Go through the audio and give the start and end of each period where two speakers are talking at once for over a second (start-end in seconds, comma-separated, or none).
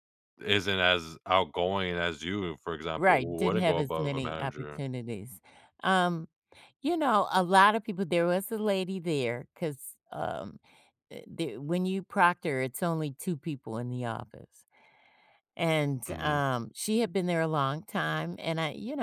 3.0-4.8